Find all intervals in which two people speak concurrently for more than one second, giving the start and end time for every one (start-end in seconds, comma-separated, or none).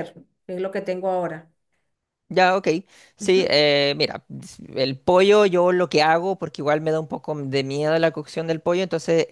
none